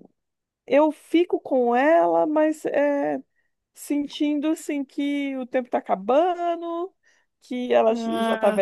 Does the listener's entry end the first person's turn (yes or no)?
no